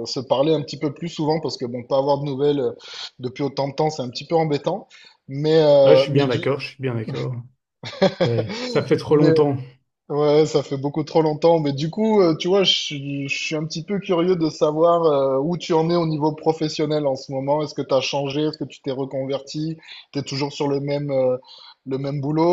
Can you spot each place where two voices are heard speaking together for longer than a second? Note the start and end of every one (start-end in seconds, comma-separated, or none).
none